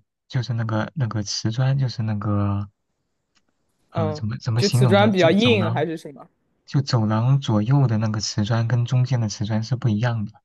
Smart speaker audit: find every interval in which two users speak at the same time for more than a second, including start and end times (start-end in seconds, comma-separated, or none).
3.9-5.8